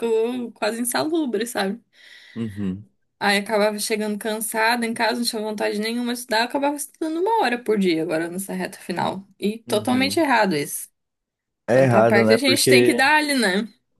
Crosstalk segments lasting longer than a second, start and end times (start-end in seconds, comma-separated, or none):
11.7-12.9